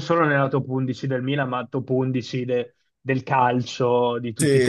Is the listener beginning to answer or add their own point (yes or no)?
yes